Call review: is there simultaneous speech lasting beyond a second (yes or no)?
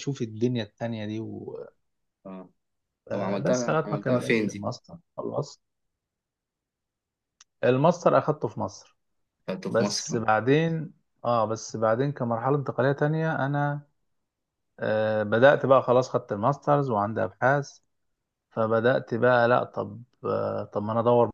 yes